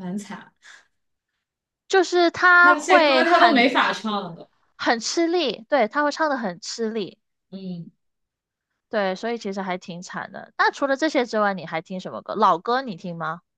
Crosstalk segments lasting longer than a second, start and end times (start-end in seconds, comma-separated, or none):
2.6-4.0